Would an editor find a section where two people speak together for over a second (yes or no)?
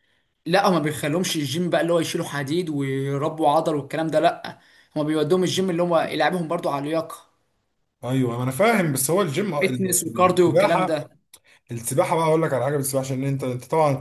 yes